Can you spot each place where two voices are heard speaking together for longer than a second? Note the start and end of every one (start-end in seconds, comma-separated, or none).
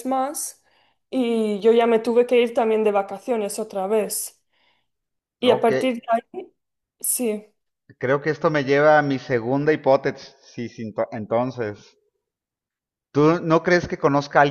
none